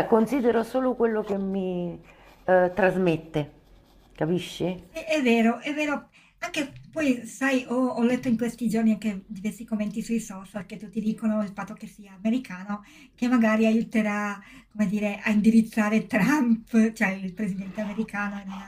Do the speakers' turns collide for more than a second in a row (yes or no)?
no